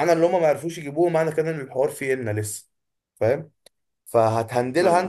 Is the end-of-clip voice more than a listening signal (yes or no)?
no